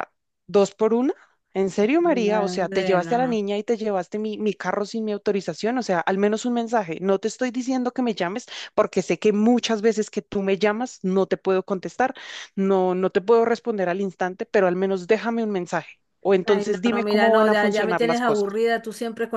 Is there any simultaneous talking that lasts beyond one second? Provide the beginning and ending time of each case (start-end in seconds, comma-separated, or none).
2.0-3.4, 16.4-18.5